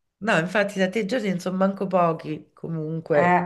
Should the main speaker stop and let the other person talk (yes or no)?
yes